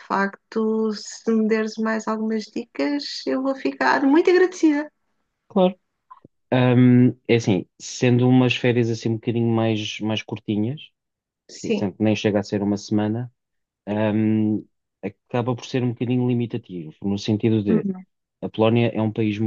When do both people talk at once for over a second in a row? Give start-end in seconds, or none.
none